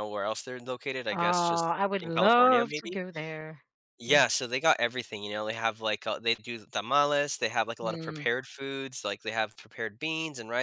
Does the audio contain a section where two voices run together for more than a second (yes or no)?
yes